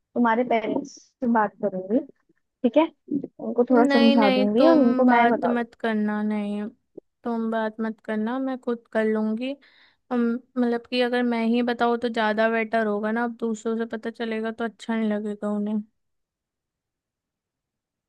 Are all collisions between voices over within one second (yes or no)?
no